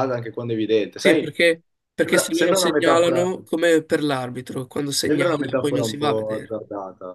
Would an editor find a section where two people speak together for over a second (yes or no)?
yes